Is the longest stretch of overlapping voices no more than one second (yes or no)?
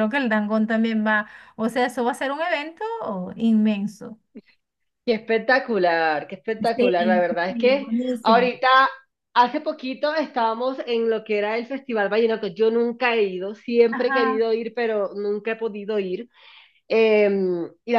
no